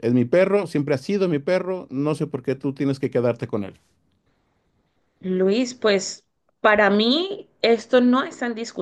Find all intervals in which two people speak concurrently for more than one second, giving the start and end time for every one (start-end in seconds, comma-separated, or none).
none